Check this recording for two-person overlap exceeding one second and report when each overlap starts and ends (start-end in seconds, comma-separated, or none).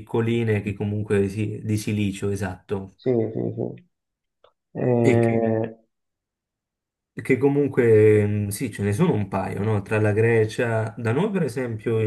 none